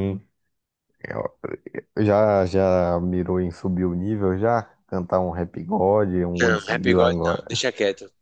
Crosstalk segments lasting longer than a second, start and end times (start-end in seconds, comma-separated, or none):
6.4-7.6